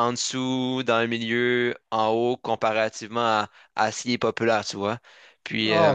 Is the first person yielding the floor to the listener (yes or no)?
yes